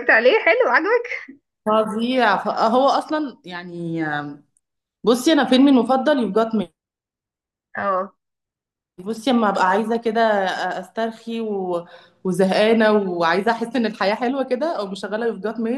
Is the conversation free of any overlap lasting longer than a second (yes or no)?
yes